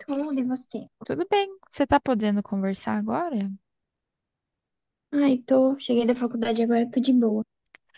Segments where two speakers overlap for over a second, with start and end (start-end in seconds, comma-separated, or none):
none